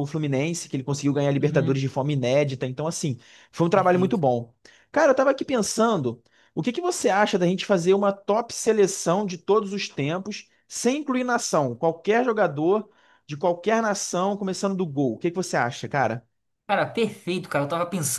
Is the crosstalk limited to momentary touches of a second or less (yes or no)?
yes